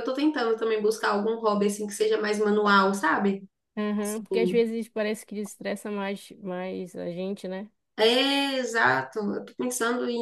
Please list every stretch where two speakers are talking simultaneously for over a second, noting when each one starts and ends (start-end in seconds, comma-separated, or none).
none